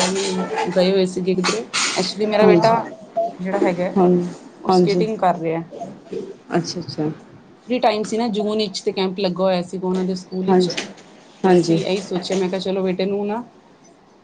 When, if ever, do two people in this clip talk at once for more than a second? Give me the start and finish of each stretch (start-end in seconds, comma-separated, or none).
none